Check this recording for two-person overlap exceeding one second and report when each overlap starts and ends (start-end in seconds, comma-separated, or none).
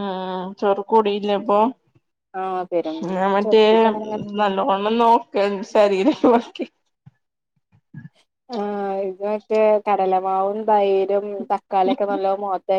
none